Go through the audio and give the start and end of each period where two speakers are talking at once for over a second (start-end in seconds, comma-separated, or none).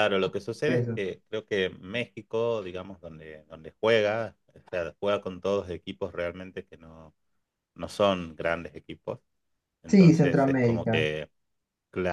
9.9-11.1